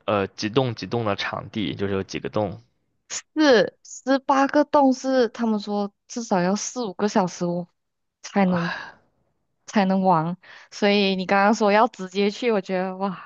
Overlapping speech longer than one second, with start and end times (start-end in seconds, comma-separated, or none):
none